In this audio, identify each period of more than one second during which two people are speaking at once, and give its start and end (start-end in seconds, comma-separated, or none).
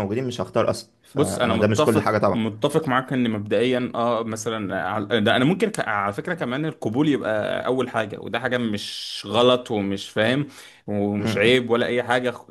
1.1-2.4